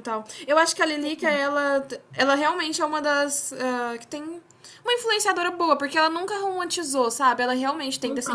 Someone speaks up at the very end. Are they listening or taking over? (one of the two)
taking over